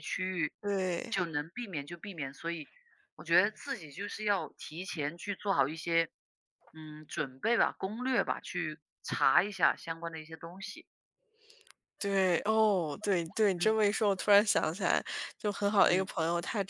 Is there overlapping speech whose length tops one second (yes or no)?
no